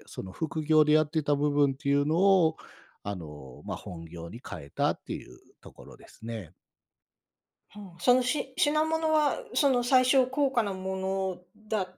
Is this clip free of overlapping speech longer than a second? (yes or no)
yes